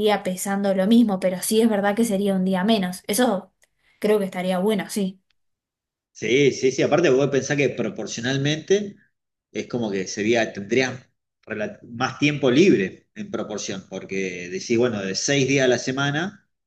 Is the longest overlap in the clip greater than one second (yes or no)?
no